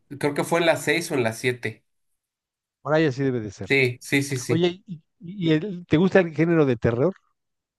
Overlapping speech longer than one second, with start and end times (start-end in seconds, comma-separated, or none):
none